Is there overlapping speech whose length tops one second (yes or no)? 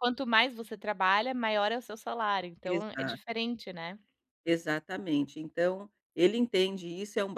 no